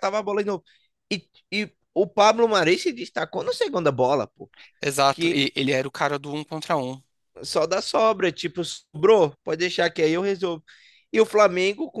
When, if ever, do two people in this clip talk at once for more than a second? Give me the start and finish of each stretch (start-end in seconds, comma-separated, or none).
none